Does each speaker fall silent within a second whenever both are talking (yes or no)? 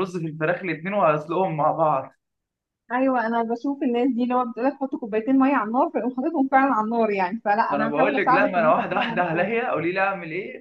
no